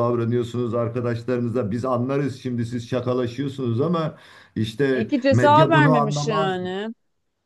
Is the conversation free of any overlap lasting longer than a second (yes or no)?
no